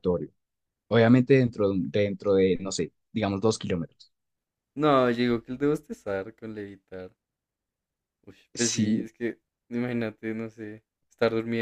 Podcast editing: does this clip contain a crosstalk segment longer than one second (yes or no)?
no